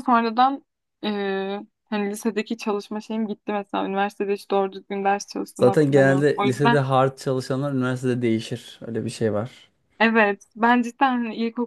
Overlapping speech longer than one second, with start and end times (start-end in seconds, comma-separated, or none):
5.5-6.8